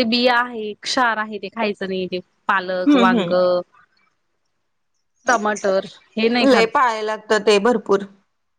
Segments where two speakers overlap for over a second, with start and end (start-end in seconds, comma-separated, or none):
none